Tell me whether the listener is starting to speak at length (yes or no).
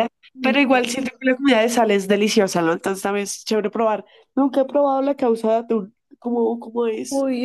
yes